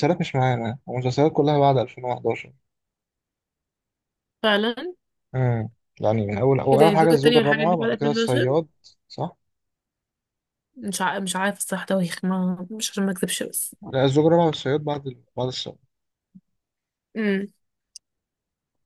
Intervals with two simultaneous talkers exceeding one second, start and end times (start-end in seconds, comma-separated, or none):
6.7-8.6